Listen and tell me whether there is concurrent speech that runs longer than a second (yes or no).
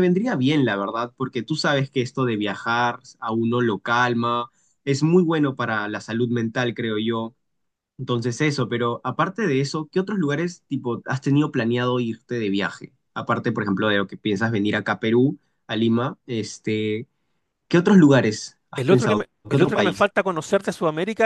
yes